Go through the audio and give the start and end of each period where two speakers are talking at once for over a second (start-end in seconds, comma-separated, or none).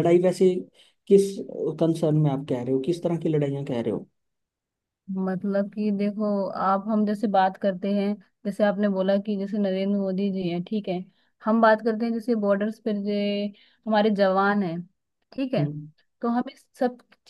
none